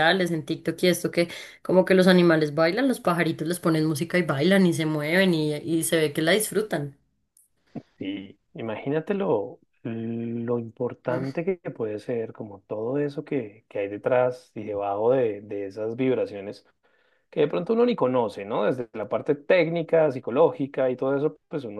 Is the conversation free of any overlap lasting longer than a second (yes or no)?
yes